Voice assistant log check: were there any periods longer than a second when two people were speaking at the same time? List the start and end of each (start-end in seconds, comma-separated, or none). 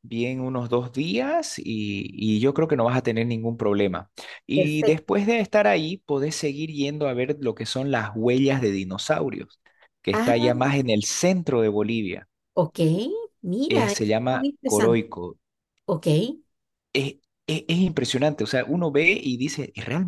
13.7-15.0